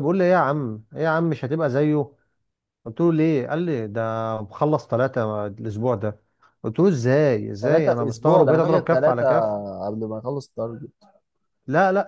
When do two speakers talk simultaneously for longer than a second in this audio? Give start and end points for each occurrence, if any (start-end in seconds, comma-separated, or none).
7.6-9.3